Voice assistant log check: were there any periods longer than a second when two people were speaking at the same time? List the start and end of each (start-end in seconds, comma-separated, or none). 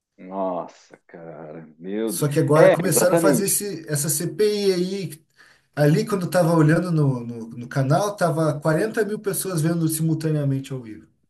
2.1-3.6